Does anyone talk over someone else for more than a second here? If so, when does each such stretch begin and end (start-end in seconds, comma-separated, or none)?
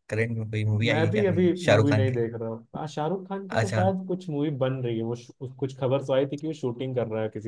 0.9-2.2